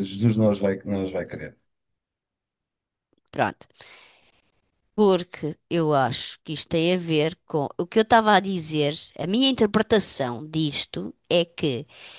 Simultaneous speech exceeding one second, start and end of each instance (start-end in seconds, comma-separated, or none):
none